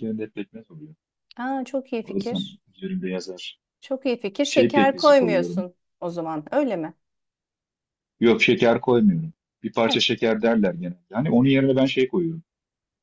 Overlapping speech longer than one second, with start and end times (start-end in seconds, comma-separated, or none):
4.5-5.7